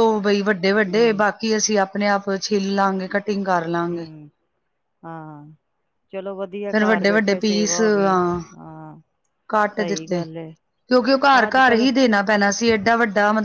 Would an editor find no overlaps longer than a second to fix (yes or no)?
no